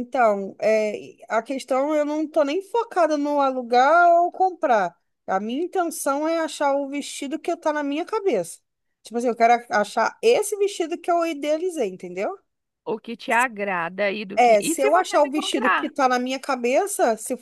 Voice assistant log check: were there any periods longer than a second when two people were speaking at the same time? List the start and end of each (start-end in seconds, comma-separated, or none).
14.4-15.9